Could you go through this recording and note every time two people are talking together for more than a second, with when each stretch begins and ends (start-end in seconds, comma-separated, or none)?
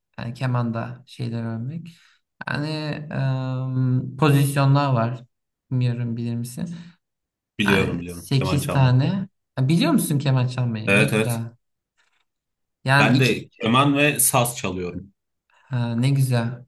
7.7-9.0